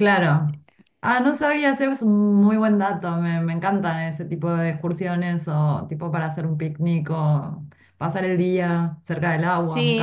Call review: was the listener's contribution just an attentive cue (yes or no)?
no